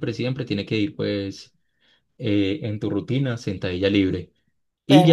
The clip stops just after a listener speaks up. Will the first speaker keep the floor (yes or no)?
yes